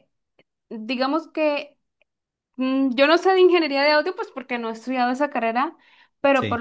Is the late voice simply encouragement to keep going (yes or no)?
yes